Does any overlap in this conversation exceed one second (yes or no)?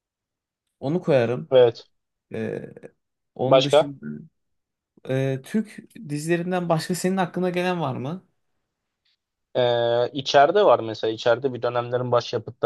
no